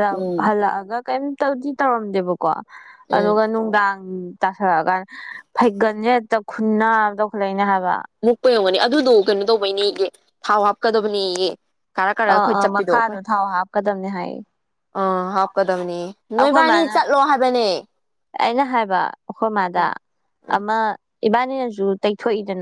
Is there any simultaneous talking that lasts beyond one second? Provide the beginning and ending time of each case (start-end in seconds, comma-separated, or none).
none